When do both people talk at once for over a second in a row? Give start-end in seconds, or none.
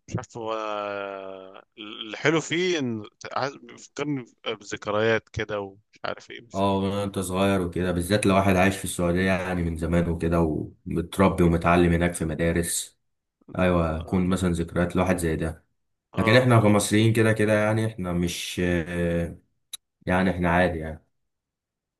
none